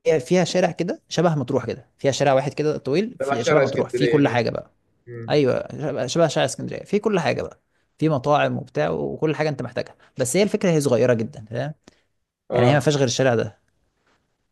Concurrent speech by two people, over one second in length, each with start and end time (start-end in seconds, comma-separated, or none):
3.2-4.5